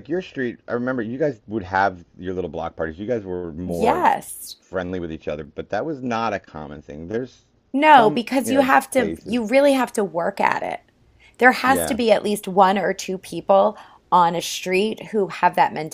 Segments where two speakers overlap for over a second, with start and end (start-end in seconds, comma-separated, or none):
7.8-9.4